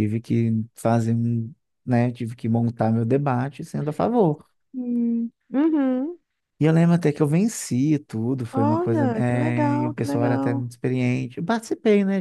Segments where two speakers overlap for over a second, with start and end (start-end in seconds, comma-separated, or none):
8.5-10.7